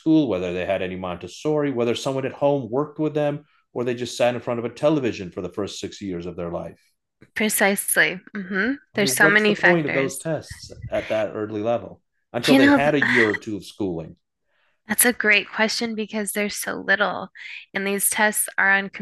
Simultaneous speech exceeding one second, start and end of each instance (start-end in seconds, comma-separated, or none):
8.9-10.3